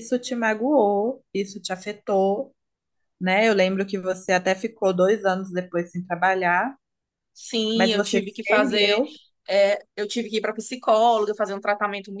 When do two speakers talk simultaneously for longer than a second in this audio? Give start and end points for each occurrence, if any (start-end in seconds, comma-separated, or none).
7.7-9.0